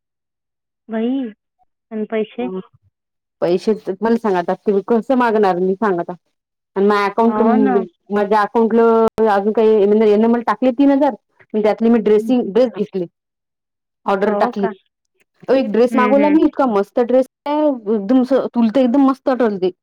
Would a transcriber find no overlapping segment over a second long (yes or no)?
yes